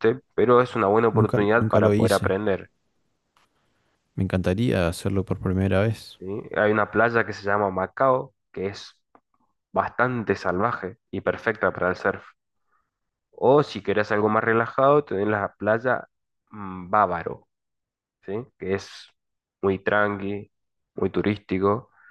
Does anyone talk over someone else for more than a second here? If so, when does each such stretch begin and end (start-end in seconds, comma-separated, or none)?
1.1-2.3